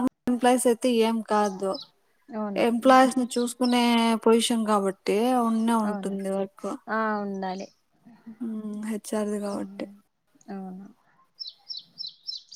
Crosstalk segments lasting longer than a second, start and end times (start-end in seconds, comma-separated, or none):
none